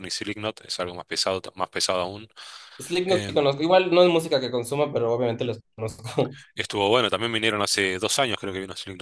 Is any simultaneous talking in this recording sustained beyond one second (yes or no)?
no